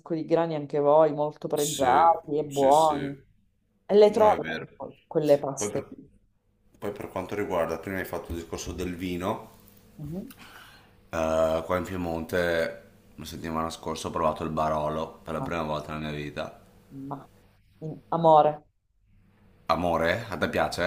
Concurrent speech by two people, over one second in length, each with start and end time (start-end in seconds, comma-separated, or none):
1.5-3.1